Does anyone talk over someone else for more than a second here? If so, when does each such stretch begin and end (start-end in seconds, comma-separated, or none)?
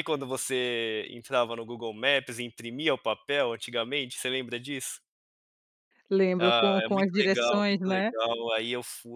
6.4-8.1